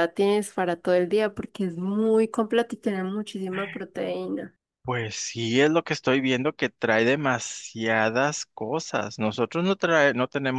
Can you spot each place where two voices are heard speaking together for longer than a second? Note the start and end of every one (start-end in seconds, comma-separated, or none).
none